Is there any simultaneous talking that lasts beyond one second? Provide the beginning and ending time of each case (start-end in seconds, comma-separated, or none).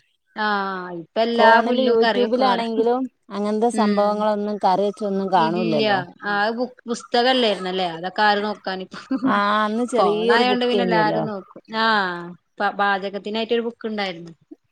10.0-11.2